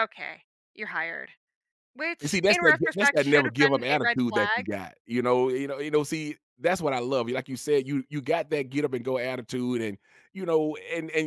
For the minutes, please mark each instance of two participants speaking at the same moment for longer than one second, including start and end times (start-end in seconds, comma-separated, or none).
2.2-4.7